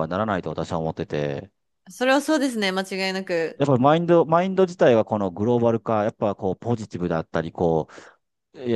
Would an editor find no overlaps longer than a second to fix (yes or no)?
yes